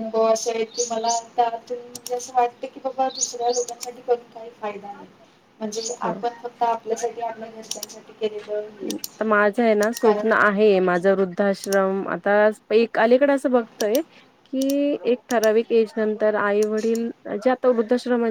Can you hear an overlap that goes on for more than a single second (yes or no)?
no